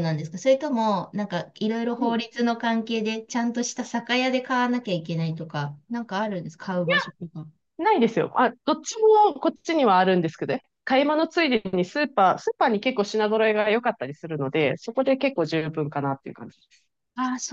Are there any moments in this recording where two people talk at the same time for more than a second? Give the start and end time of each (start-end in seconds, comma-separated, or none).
none